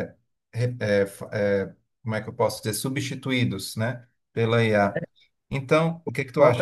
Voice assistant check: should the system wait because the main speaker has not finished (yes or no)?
no